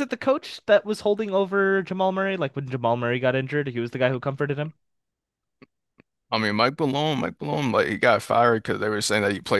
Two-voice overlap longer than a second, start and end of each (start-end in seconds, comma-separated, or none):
none